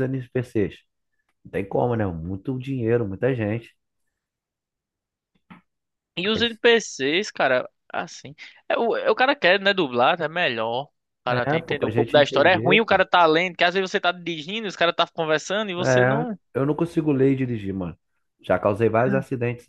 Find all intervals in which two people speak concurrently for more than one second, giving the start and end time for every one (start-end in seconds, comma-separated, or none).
11.3-13.0